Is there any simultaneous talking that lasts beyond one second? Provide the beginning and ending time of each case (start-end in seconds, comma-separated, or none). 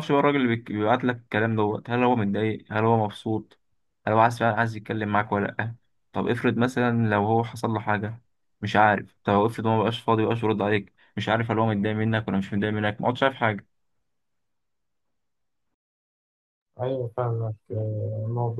none